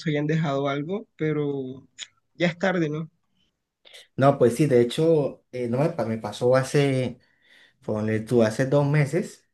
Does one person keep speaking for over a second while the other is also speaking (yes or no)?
no